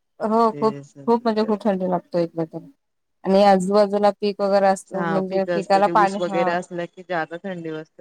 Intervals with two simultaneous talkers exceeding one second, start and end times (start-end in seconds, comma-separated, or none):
5.0-6.5